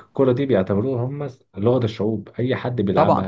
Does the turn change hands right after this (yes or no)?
no